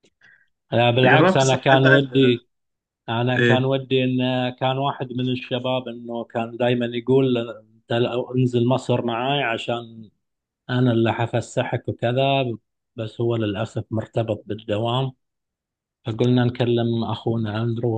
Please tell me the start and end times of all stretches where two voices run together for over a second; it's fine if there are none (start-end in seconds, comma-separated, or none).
1.1-2.4